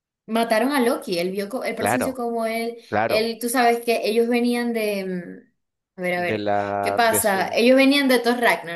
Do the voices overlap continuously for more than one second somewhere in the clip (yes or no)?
yes